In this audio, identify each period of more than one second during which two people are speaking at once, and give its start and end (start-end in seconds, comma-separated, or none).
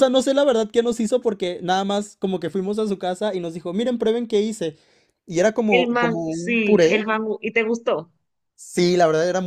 5.7-7.0